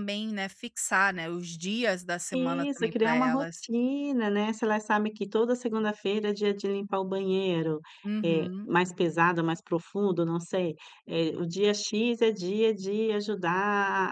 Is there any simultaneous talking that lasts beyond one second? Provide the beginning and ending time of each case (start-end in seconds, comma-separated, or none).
2.3-3.6